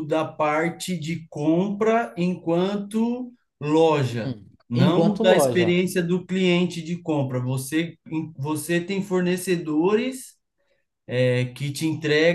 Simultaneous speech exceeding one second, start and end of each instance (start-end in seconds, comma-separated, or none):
4.1-5.8